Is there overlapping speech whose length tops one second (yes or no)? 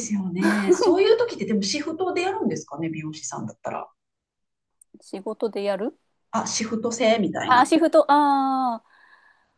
no